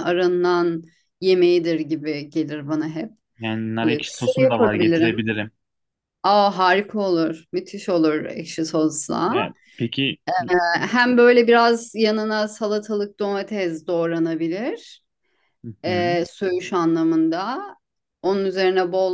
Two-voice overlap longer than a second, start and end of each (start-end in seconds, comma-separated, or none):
3.8-5.3